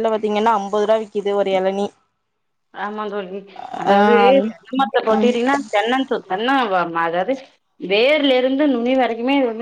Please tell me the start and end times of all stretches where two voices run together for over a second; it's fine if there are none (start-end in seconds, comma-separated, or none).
3.9-5.3